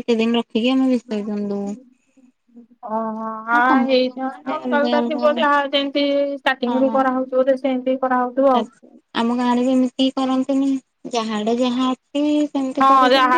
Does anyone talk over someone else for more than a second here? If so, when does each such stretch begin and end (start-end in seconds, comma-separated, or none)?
3.5-5.4